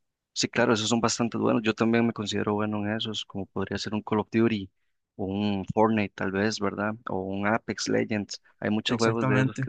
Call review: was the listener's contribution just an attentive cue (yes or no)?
yes